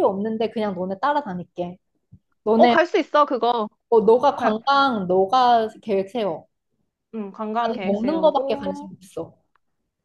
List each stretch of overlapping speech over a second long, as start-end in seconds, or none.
7.6-8.9